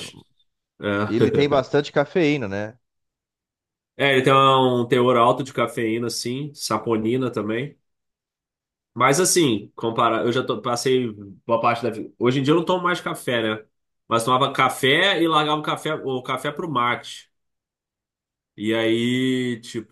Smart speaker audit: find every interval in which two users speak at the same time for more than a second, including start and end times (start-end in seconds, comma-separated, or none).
none